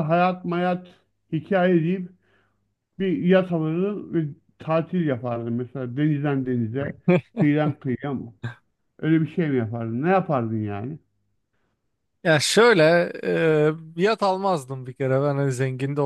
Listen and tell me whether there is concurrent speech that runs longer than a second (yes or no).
no